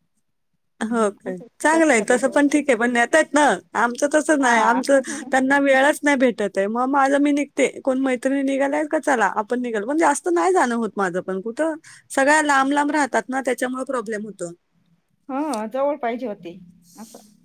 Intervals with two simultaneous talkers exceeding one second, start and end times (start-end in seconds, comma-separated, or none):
1.0-2.9